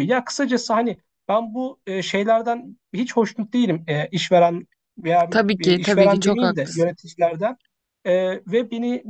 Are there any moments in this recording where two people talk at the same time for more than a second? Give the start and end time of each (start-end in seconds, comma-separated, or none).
5.3-7.0